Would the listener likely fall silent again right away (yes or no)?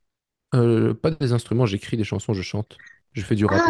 no